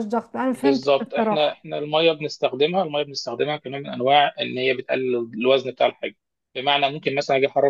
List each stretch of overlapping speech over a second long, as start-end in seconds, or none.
0.5-1.7